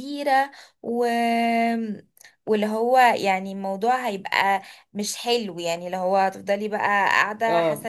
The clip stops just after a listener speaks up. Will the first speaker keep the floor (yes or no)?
no